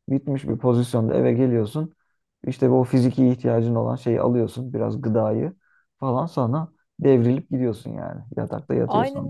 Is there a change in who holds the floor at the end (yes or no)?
yes